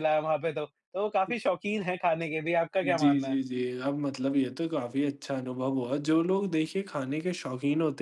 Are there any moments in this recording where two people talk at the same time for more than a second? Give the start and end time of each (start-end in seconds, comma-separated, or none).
none